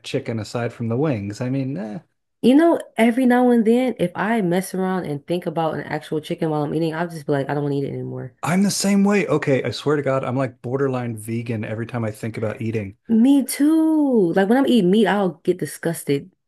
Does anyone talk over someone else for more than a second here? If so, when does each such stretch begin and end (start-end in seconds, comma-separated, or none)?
none